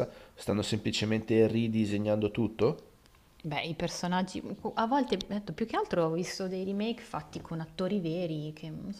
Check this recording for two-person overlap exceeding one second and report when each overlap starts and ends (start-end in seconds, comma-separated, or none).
none